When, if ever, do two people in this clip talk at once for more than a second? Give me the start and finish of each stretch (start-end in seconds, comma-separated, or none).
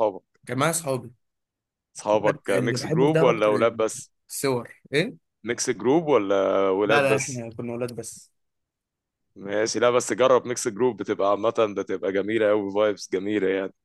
2.1-3.5